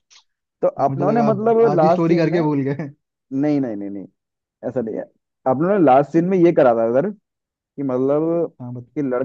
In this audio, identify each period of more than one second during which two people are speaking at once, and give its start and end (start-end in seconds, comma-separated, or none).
0.9-2.4